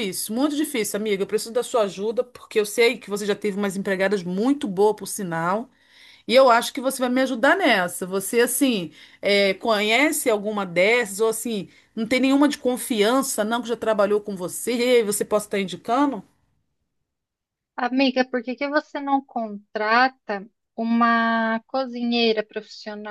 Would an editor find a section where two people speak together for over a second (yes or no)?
no